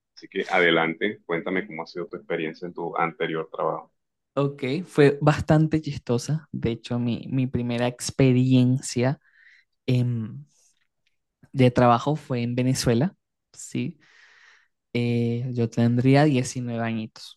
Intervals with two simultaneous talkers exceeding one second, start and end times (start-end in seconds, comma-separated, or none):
none